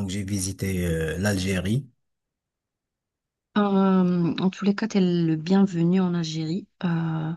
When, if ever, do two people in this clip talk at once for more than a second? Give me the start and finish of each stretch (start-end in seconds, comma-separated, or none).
none